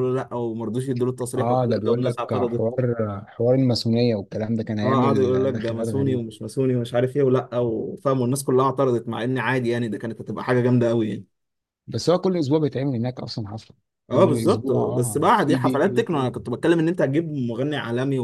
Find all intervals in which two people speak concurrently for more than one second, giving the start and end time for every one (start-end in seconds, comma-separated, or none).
1.4-2.6, 4.8-6.2, 14.1-16.3